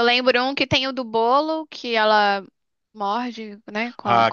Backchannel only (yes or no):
no